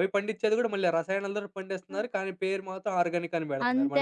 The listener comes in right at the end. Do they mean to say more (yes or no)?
yes